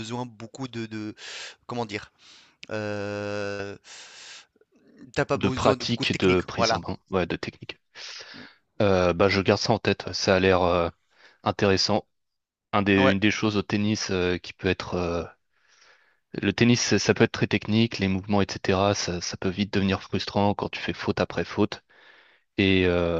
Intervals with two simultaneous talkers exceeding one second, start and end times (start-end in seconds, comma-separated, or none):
5.3-6.8